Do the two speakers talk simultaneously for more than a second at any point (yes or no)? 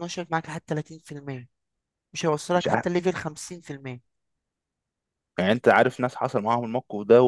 no